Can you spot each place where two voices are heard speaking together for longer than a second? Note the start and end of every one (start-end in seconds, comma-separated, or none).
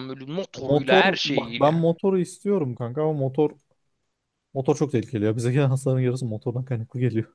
0.6-1.9